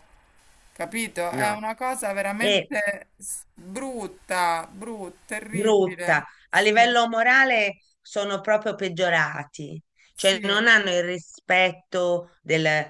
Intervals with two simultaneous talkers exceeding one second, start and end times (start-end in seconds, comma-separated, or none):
5.5-6.9